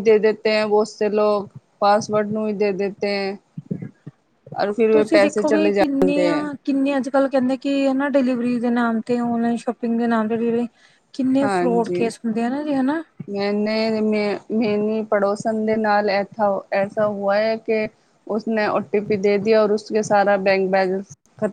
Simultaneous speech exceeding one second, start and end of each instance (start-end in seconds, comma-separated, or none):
4.9-6.4